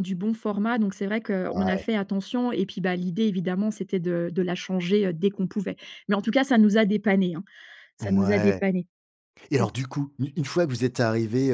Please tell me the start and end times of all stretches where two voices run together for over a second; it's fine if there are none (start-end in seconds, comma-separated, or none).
none